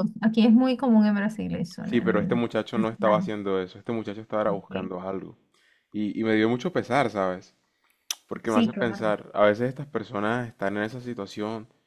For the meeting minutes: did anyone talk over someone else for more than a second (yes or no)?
yes